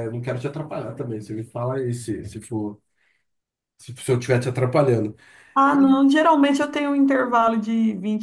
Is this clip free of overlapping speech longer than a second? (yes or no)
yes